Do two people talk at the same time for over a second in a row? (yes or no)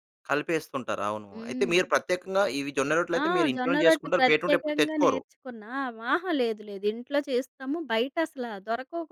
yes